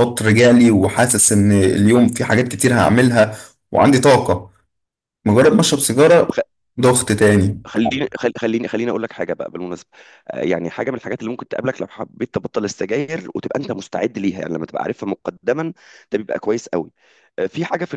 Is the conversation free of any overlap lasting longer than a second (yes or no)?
yes